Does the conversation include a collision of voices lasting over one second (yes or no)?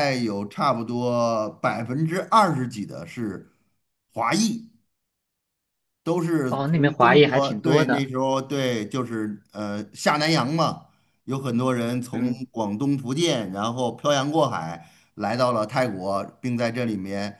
yes